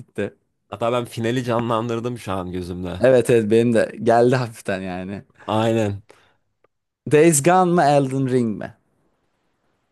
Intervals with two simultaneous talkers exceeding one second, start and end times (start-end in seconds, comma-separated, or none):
none